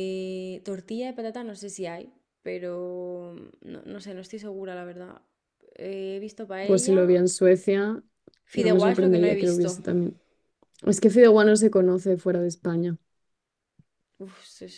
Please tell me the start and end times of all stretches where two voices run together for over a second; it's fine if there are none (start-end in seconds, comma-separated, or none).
8.5-9.8